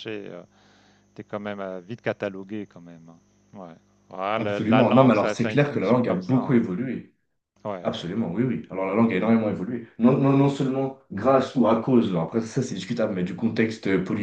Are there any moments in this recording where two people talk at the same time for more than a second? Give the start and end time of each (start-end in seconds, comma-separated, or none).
4.4-6.6